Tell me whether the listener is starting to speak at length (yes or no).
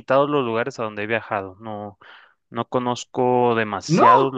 no